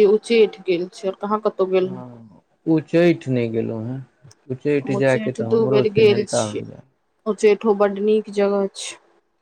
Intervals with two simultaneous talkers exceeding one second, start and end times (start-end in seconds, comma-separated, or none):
4.8-6.6